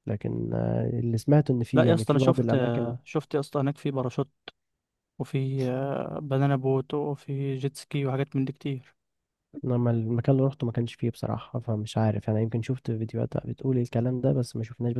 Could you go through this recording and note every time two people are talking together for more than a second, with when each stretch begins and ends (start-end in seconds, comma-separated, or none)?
1.7-2.9